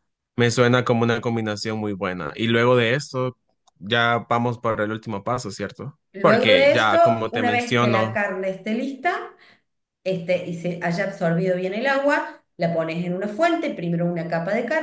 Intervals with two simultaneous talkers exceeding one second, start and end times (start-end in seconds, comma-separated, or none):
6.1-8.2